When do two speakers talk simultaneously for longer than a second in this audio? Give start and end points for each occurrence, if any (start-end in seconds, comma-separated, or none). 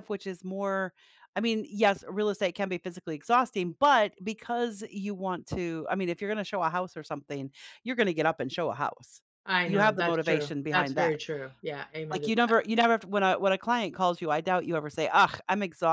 9.7-11.2